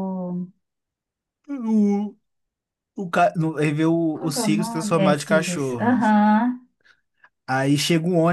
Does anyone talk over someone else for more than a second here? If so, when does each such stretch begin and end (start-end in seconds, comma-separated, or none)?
4.1-6.0